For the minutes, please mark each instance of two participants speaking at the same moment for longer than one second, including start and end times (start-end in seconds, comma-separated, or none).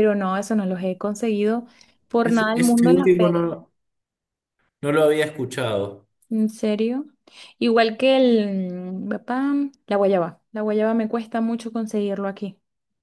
2.2-3.4